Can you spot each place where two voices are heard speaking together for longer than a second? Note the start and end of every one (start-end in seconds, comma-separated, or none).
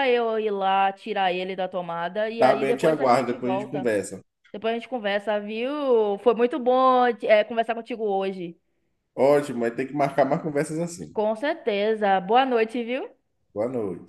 2.4-3.9